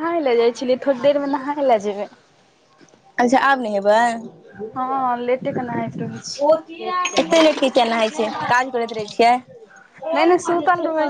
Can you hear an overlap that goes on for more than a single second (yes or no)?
no